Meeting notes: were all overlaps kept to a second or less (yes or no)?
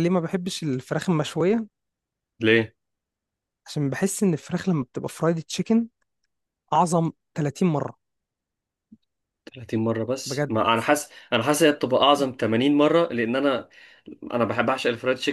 yes